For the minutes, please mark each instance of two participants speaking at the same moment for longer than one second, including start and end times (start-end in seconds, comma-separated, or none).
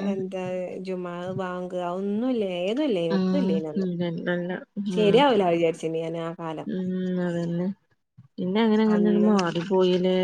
none